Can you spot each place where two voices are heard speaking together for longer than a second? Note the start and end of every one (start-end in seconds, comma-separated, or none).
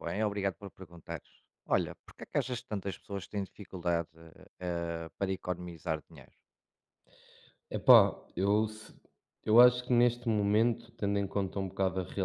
none